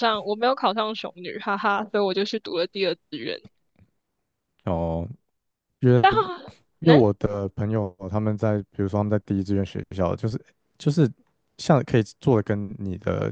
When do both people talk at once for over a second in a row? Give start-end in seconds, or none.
none